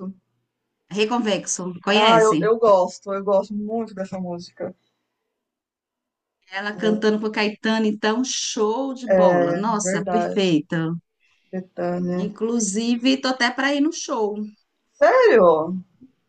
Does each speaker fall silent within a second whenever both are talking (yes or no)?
no